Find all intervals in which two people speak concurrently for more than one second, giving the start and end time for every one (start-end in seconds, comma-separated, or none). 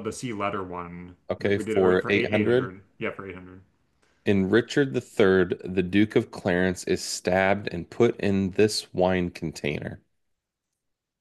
1.3-2.7